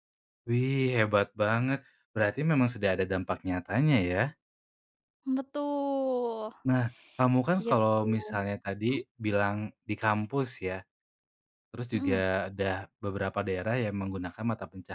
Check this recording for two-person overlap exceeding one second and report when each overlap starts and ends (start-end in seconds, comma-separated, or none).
none